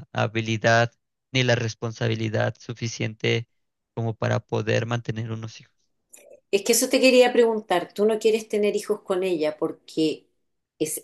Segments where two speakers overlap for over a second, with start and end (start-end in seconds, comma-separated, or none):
none